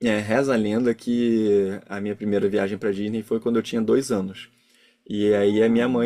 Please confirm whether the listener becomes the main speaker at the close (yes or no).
no